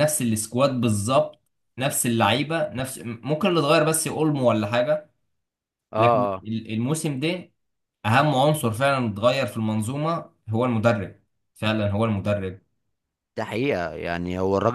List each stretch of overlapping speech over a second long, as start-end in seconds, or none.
none